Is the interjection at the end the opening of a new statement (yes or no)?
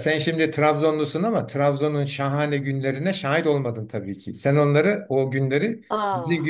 no